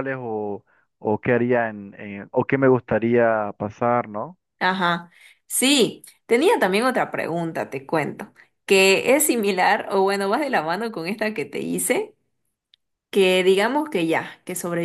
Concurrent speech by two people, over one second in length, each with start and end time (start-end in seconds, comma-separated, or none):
none